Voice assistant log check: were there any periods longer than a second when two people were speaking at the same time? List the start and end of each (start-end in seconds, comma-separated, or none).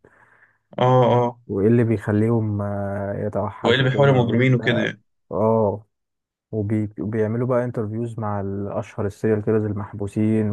3.7-4.9